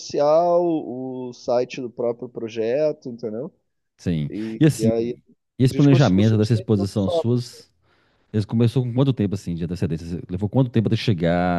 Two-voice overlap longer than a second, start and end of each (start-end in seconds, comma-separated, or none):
5.7-7.3